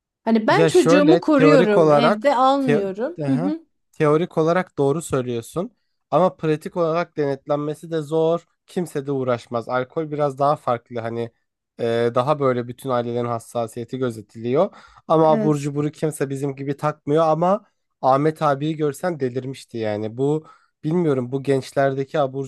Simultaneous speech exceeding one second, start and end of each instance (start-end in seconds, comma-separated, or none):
0.5-3.5